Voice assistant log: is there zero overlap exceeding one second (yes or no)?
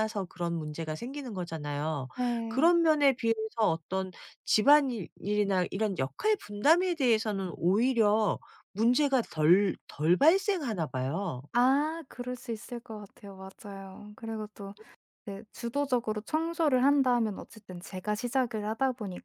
yes